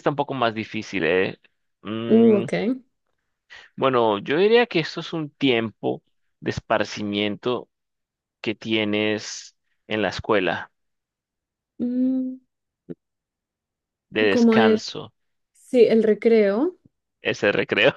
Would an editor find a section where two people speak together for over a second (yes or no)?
no